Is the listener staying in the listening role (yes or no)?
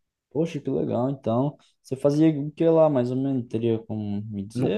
no